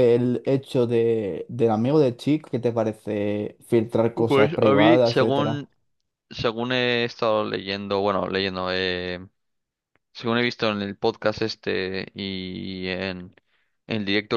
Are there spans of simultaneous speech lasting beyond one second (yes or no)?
yes